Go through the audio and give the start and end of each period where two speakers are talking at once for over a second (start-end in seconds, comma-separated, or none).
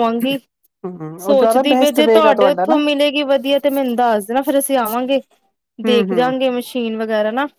1.2-2.8